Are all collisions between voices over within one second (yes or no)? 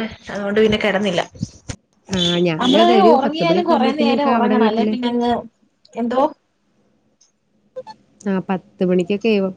no